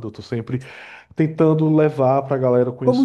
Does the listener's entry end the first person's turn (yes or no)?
yes